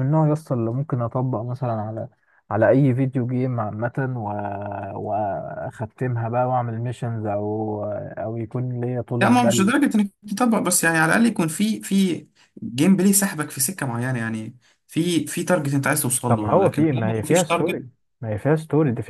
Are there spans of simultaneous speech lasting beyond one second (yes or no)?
yes